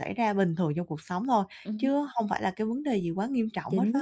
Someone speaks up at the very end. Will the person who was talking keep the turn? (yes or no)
no